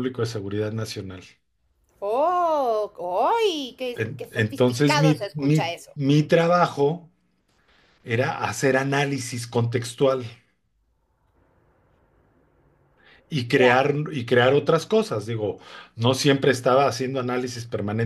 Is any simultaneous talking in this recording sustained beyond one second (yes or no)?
yes